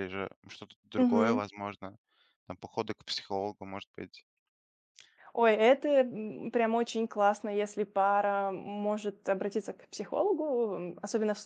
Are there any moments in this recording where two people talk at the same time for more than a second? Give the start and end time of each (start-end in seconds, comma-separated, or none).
none